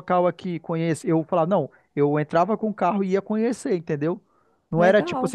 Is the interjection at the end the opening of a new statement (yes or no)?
no